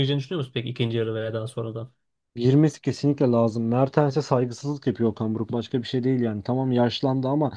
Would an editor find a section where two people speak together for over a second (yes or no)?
no